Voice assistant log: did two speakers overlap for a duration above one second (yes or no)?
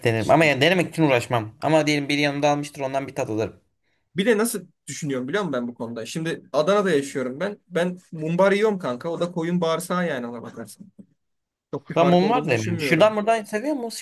yes